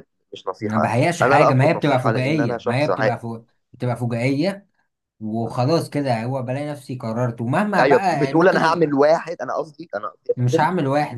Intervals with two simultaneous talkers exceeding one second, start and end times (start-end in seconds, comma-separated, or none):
0.6-3.2, 7.8-9.0